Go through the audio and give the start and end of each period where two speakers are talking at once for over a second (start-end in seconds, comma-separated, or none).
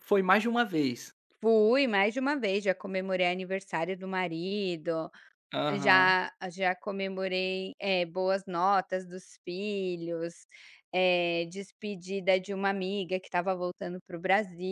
none